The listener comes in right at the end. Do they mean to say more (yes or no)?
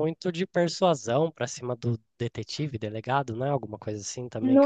yes